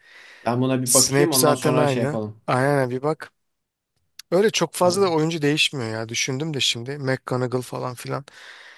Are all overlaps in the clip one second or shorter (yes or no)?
no